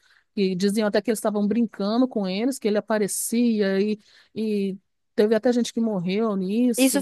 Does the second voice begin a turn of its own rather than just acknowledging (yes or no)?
yes